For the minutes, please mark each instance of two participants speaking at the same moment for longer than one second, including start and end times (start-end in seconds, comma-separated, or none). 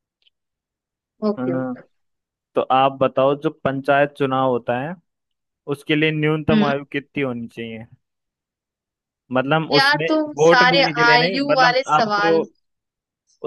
9.7-12.3